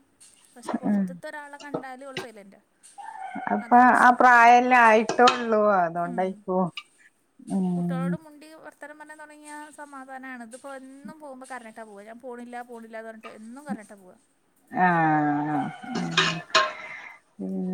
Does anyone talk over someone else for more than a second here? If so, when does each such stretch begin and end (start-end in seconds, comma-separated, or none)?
none